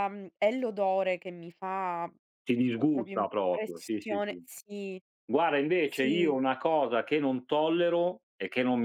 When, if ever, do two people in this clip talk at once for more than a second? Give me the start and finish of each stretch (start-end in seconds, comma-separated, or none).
2.9-4.4